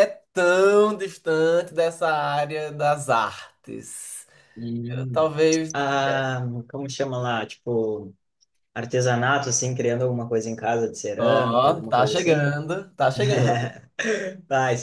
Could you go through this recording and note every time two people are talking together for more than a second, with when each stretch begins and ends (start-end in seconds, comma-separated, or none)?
11.2-12.5